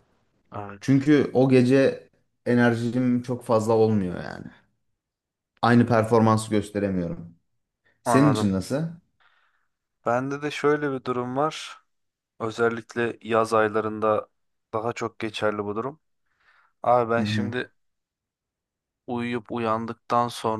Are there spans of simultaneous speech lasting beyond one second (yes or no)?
no